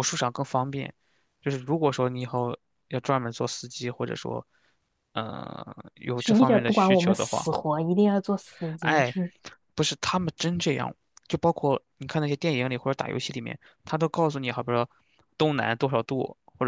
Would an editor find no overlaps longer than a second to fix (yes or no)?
no